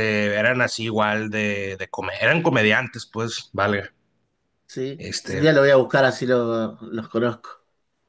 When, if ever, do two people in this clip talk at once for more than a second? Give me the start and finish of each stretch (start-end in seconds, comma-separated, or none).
none